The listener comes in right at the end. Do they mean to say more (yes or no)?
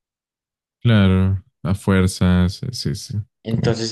yes